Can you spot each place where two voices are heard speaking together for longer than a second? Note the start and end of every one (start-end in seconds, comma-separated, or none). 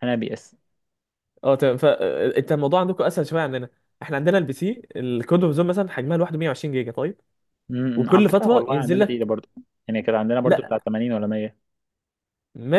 8.0-9.3